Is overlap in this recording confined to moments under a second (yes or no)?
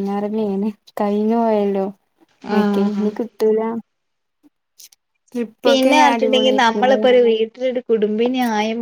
no